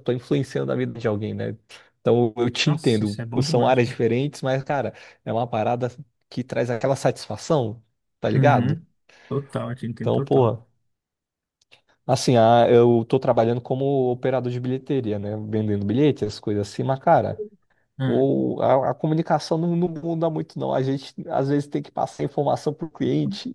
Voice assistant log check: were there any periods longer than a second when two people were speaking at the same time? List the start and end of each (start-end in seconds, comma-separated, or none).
2.6-3.9